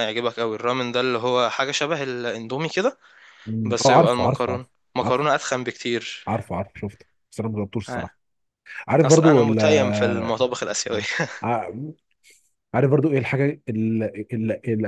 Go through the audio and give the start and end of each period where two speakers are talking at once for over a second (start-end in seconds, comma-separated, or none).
3.6-5.2, 9.0-10.4